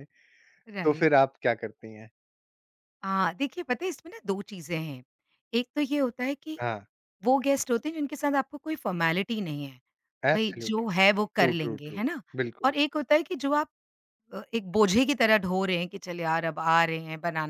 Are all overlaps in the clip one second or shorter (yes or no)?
no